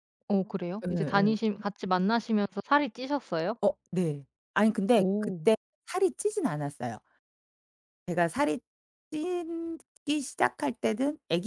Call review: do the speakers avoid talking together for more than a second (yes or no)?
yes